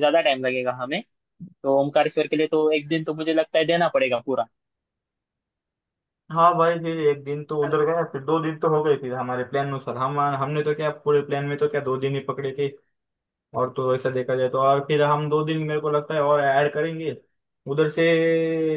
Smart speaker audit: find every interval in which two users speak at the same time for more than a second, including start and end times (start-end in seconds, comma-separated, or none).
none